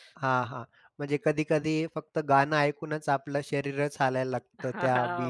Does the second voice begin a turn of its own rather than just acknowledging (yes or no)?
yes